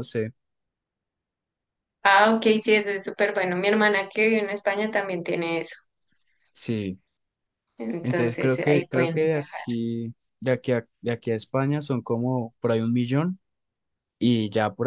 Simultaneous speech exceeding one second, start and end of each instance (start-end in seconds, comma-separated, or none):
8.0-9.7